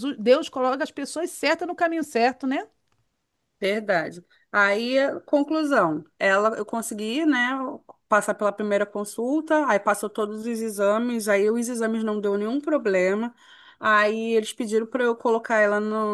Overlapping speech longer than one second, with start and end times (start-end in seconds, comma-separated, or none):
none